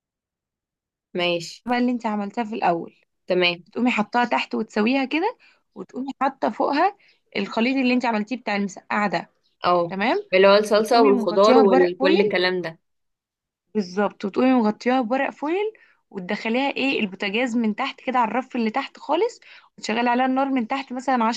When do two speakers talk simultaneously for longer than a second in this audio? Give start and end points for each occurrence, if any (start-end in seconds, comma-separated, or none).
10.7-12.4